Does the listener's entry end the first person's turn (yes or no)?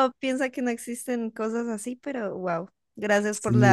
no